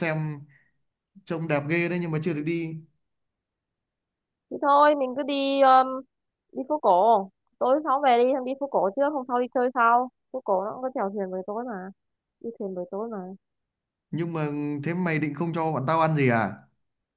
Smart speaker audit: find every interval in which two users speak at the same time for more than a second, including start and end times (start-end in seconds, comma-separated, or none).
none